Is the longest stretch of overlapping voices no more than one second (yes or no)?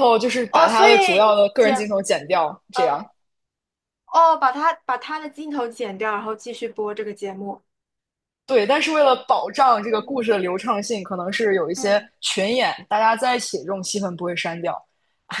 no